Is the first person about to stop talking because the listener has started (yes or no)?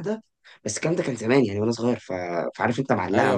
no